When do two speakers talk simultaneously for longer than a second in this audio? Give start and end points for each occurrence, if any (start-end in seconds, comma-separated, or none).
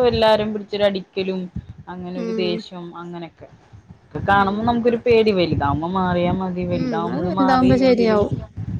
6.8-8.2